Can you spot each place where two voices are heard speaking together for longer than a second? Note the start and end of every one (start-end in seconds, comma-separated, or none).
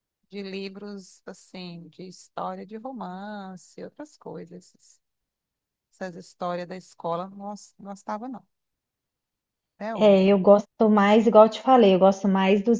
none